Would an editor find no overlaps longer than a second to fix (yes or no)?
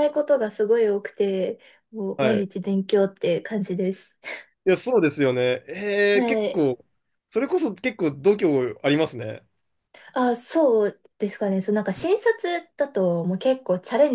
yes